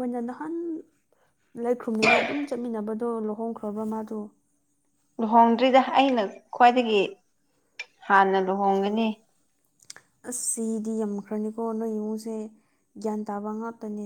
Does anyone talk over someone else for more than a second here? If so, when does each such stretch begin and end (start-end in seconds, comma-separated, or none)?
none